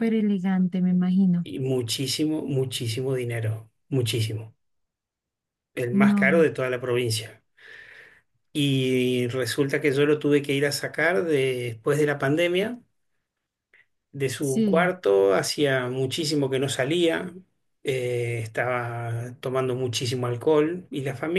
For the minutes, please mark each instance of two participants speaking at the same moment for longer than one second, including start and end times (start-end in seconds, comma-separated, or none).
none